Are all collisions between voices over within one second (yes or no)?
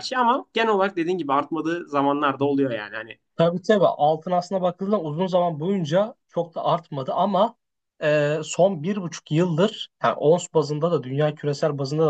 yes